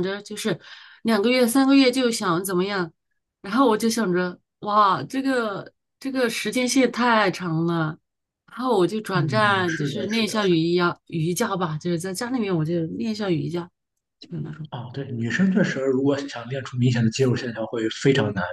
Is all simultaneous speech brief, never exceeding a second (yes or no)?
no